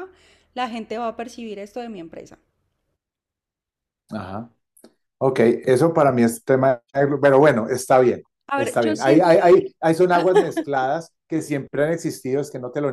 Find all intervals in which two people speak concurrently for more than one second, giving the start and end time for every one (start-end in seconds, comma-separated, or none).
8.5-9.7